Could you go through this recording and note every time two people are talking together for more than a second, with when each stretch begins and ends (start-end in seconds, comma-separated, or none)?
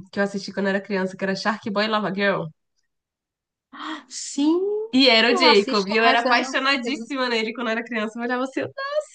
5.3-6.6